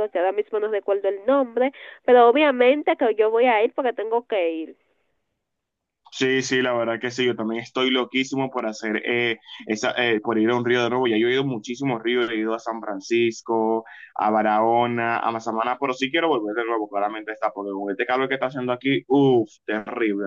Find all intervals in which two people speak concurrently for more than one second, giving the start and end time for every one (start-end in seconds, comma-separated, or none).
none